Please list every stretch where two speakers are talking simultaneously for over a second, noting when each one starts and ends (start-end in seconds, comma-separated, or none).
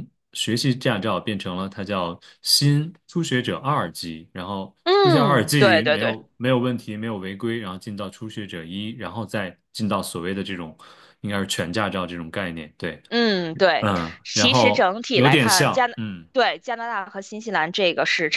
4.8-6.2, 13.8-15.9